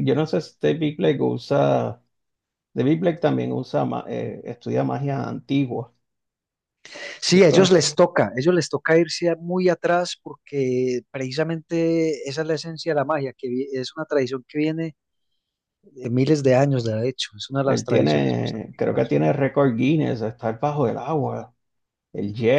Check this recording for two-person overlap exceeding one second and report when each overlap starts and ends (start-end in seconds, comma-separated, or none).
17.6-19.2